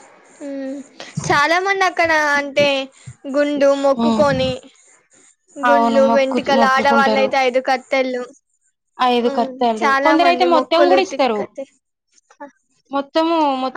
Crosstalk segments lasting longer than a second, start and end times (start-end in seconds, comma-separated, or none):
5.7-7.3, 9.3-11.4